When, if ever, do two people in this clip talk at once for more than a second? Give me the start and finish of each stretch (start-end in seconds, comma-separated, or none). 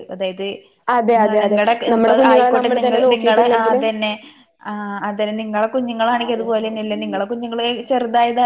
1.4-3.8